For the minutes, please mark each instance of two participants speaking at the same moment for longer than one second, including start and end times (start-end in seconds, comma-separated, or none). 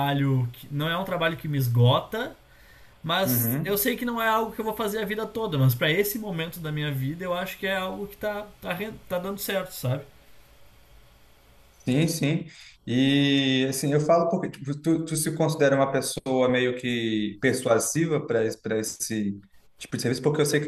none